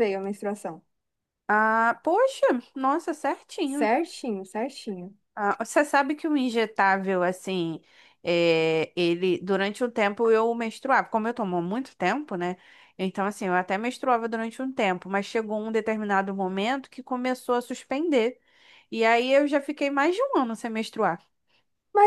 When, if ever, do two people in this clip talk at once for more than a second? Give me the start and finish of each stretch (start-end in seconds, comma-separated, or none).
none